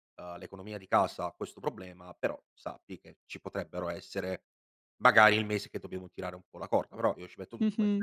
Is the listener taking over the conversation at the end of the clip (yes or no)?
yes